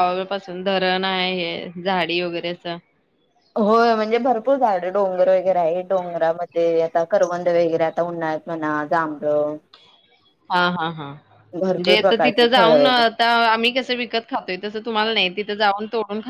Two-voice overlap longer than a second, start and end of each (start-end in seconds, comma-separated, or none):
11.6-13.0